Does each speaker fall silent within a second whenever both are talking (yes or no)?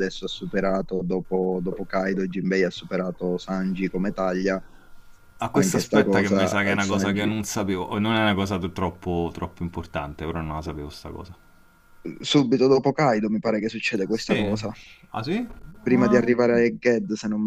no